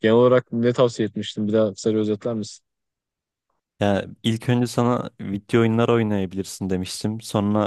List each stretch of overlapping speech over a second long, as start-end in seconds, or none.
none